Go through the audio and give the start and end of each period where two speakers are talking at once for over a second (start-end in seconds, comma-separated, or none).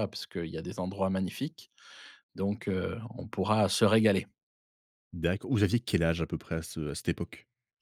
none